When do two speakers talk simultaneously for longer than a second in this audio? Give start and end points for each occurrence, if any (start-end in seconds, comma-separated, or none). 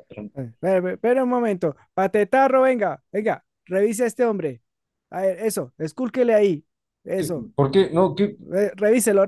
none